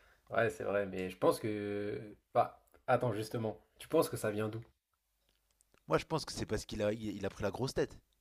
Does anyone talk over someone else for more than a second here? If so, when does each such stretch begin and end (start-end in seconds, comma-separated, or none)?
none